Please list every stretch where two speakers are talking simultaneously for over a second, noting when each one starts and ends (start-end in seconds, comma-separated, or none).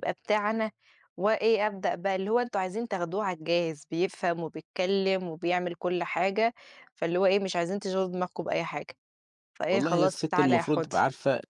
9.7-11.0